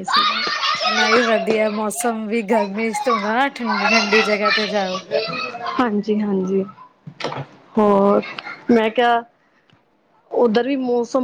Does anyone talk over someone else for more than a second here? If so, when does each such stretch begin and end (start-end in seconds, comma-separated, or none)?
none